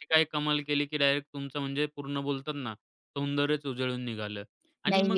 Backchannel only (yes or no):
yes